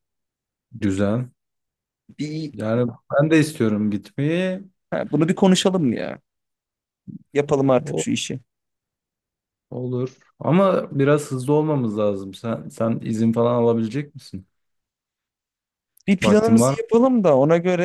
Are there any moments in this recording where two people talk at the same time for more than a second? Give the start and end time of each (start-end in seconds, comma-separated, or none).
none